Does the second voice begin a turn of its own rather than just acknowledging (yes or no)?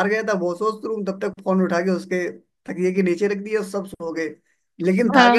no